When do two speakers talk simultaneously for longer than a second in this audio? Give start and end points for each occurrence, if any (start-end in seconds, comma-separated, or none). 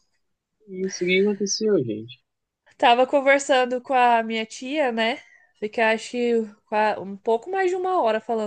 none